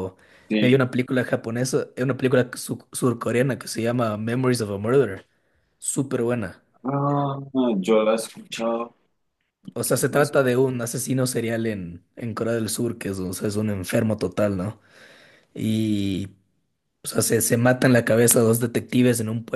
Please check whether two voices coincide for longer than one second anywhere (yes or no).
no